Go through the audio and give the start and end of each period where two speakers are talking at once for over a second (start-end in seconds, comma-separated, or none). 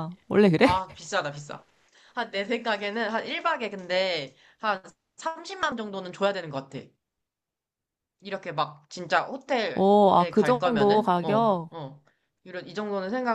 9.7-11.7